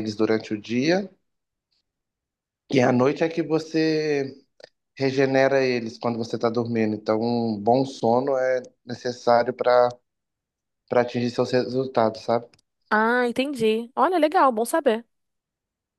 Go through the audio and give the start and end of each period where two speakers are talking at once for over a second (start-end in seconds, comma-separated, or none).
none